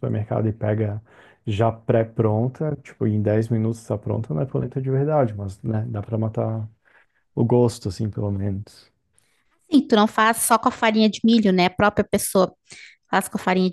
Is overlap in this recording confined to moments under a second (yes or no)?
yes